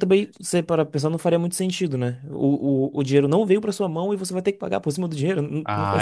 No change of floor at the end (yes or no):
no